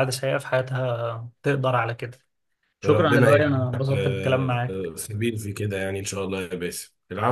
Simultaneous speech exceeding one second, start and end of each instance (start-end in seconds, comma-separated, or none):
2.9-5.0